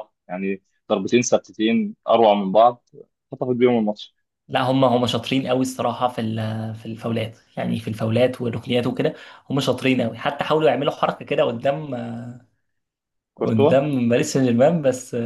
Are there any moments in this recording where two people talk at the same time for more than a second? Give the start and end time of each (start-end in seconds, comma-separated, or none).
none